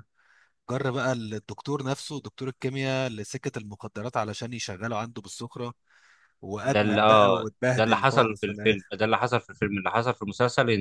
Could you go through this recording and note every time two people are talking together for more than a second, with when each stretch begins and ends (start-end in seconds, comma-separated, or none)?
6.6-8.9